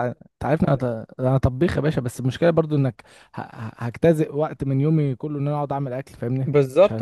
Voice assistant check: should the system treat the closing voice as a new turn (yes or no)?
yes